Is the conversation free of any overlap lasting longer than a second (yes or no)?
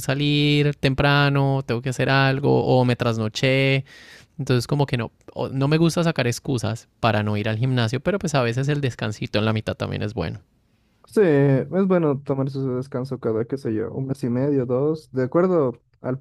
yes